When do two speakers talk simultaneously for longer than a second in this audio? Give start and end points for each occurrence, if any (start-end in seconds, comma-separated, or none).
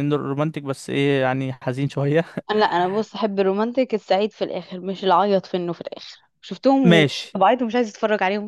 none